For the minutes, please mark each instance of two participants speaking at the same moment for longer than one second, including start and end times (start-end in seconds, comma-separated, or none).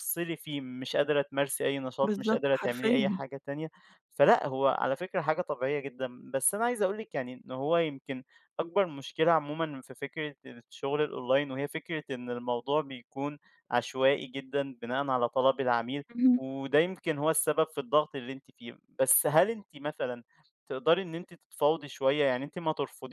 2.0-3.2